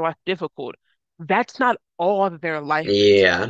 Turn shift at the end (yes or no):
yes